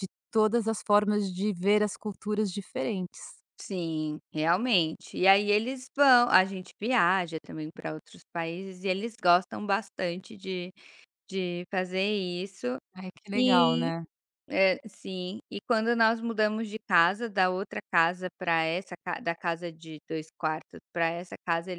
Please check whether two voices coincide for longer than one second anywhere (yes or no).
no